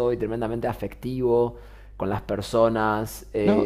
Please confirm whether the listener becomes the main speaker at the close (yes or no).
yes